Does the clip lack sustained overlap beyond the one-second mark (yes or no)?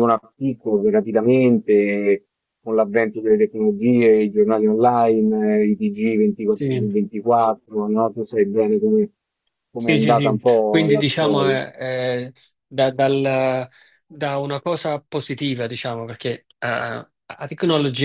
no